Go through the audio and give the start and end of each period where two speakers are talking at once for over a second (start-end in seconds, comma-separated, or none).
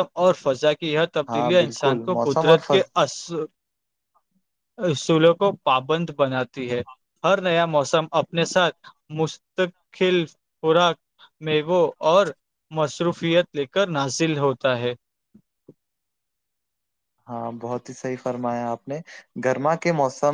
1.3-2.8